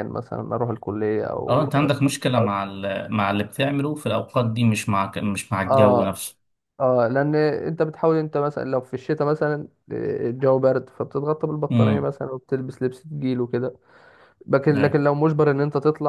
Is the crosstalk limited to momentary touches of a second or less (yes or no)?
yes